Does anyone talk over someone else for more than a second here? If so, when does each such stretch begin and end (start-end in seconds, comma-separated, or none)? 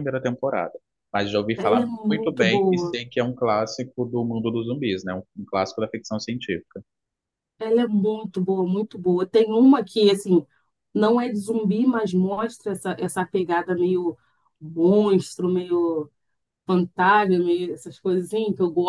1.6-3.0